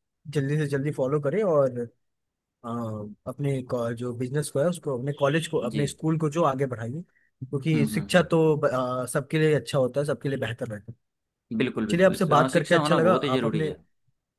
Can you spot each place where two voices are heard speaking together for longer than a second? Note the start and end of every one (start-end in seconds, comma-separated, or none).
11.9-13.7